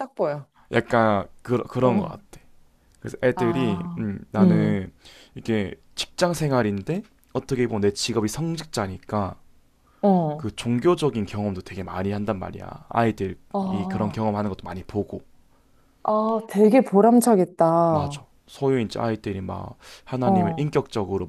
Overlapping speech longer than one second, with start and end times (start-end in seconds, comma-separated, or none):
3.4-4.9